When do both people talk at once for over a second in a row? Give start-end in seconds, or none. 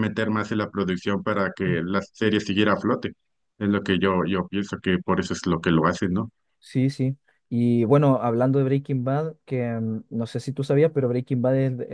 none